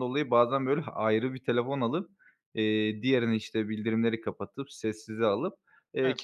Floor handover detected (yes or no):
no